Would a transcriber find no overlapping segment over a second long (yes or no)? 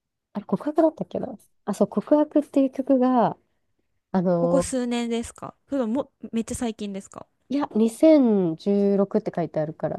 yes